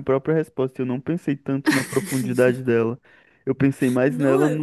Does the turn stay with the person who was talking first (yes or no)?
yes